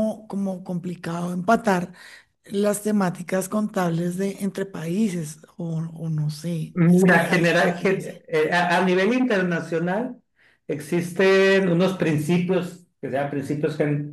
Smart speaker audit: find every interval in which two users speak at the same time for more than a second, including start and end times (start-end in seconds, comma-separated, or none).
6.7-8.2